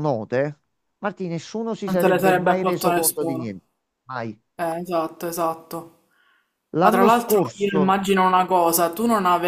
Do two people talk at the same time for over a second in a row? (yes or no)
yes